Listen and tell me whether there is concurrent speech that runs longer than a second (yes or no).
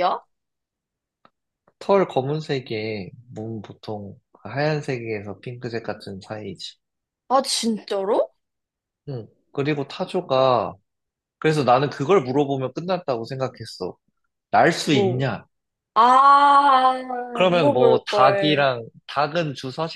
yes